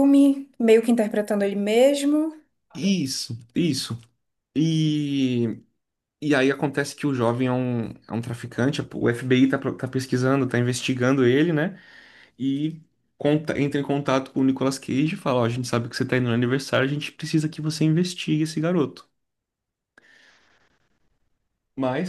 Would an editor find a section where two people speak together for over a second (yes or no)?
no